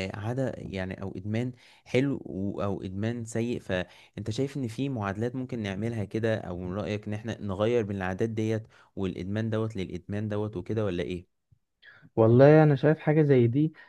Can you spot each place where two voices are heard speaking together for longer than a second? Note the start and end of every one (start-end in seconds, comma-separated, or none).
none